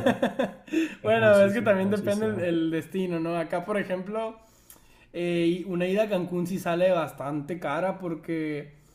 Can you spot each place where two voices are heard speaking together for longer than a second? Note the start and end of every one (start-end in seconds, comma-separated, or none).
1.0-2.5